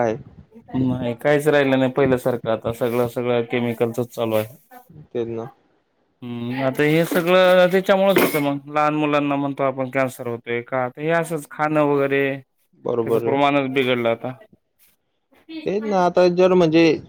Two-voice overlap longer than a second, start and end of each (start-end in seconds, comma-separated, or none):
none